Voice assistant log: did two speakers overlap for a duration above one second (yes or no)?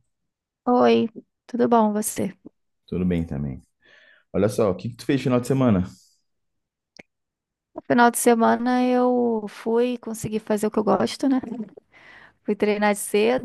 no